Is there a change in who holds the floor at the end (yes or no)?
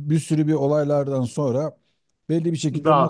no